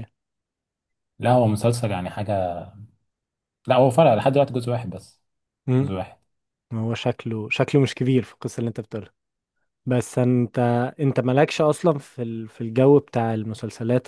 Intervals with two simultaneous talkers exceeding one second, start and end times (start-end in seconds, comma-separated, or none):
none